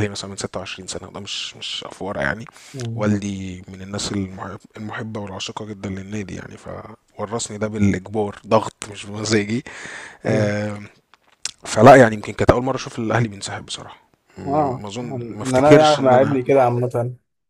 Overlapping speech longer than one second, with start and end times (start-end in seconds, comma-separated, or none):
14.5-16.4